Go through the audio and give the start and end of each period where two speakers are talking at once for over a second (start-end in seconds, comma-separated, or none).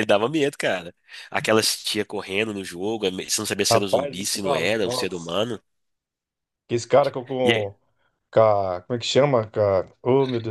3.7-5.4